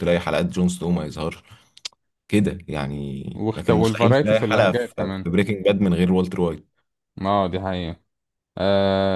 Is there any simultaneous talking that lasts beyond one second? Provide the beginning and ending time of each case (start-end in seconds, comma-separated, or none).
3.3-5.3